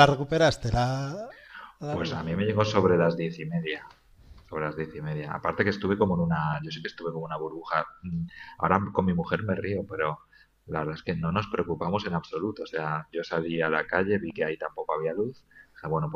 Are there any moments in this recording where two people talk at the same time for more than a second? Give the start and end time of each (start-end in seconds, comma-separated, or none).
none